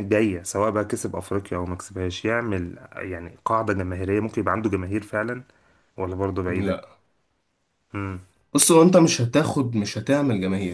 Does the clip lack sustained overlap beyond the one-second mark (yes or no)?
yes